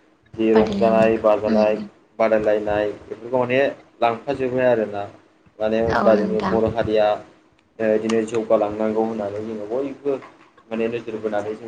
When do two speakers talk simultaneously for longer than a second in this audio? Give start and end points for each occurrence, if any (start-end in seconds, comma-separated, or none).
0.5-1.8